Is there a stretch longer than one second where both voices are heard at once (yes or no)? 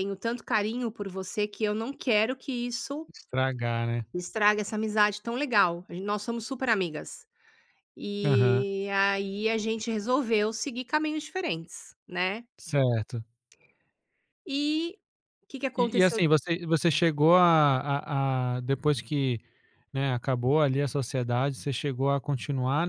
no